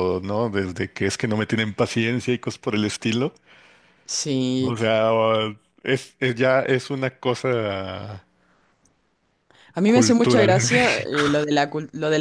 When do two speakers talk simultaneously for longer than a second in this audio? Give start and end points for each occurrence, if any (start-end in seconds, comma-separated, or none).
9.9-11.3